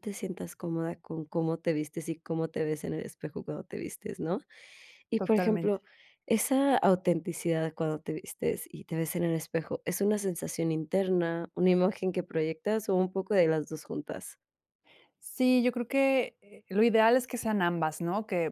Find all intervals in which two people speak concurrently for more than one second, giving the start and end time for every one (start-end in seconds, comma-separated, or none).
none